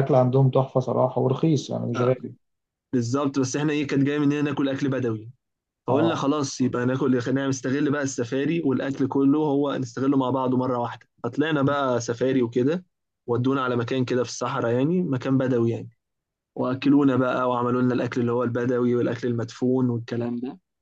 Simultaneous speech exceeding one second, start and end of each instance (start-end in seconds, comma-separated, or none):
none